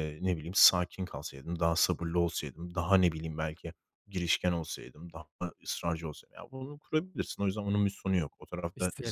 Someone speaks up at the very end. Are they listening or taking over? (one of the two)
listening